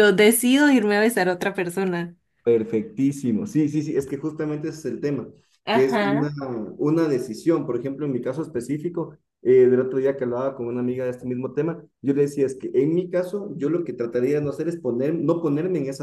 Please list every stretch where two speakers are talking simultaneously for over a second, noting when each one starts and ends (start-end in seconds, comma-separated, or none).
none